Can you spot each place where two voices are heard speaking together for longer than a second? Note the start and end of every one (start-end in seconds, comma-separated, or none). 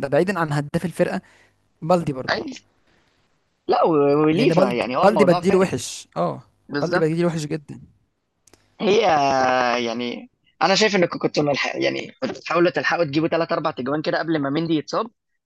4.3-5.8